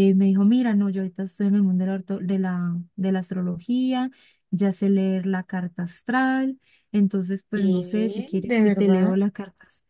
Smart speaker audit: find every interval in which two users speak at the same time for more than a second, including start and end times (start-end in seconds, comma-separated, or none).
7.5-9.2